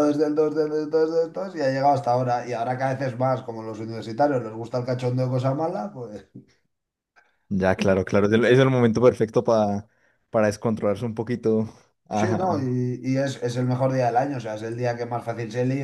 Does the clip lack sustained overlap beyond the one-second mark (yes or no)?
yes